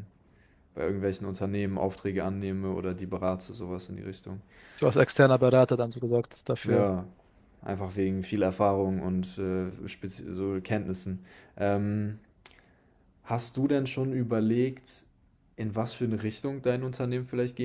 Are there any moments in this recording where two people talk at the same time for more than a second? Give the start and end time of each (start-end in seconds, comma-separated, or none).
none